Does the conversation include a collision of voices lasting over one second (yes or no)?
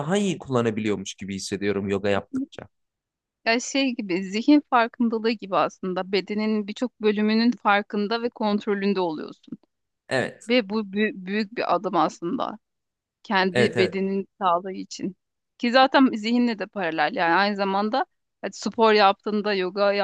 no